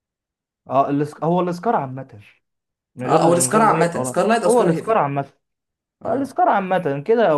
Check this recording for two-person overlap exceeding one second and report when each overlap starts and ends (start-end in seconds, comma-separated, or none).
3.1-5.0